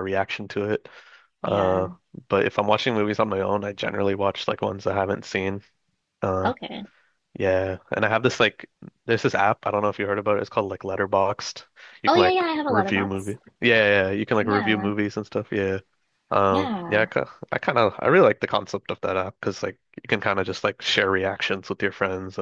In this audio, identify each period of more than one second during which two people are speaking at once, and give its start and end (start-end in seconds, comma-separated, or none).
12.1-13.4